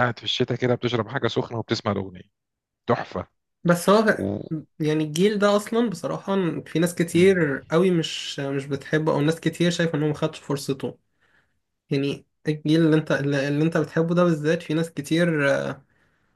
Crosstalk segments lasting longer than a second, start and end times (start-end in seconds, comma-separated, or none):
none